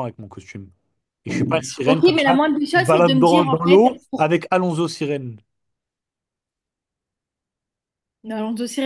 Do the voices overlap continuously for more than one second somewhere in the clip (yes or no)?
yes